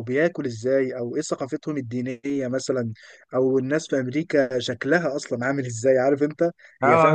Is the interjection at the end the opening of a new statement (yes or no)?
yes